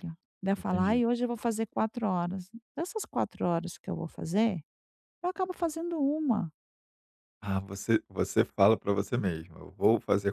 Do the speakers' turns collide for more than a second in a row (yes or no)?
no